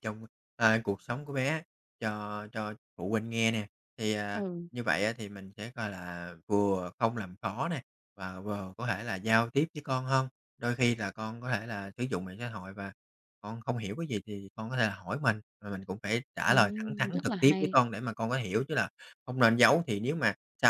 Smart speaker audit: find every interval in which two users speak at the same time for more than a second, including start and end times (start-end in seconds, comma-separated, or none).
16.5-17.8